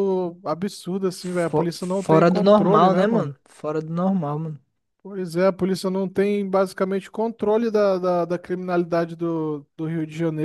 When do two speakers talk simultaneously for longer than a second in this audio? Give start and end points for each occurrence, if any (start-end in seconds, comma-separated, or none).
1.2-3.3